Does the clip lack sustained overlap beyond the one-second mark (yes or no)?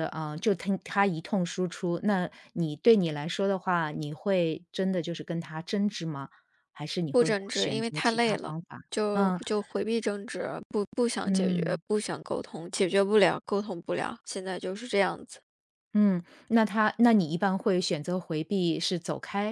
no